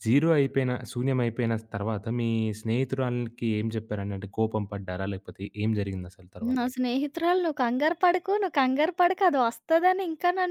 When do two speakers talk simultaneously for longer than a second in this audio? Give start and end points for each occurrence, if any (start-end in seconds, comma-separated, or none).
none